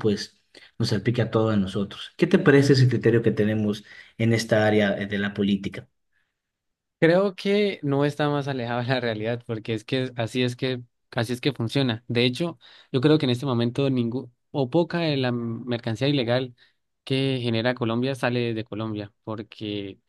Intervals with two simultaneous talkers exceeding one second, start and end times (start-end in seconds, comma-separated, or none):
none